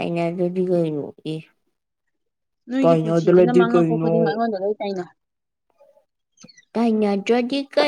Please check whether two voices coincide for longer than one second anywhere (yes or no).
yes